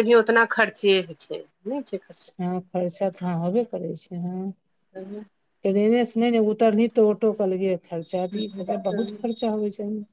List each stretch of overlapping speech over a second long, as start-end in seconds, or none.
none